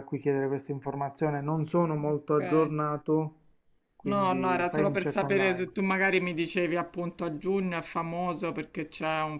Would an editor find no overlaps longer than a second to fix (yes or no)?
no